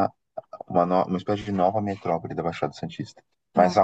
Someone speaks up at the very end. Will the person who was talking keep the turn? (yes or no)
yes